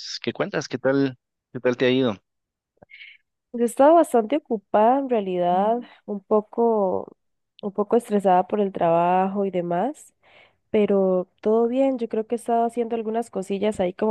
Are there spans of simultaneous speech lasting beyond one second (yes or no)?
no